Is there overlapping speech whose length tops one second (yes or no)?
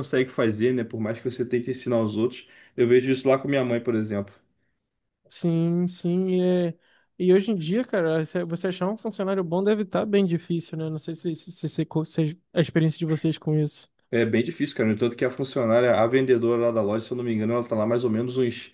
no